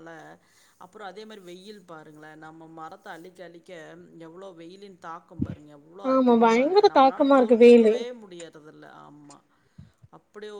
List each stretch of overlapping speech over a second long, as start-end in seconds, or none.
6.1-7.9